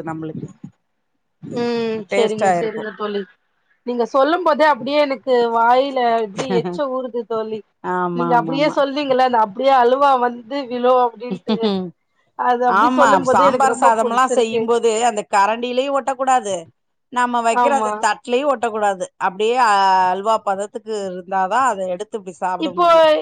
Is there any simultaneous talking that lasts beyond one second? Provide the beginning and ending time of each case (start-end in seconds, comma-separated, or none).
12.8-14.6